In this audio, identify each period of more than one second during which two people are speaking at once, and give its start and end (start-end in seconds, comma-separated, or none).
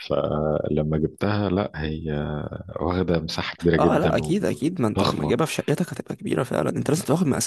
3.8-5.3